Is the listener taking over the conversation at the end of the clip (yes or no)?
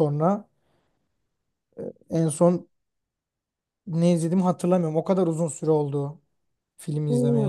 yes